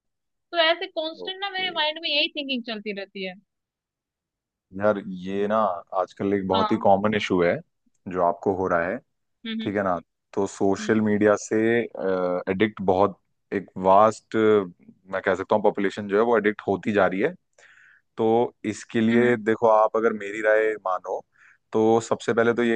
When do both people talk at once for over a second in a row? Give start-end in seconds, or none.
none